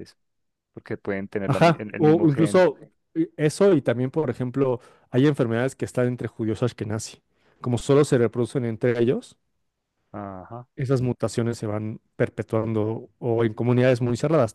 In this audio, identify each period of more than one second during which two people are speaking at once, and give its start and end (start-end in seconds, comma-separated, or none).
1.4-2.7